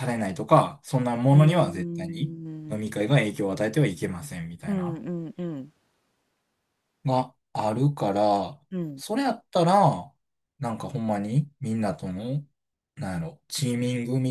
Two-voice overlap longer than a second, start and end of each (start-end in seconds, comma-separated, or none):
1.3-2.8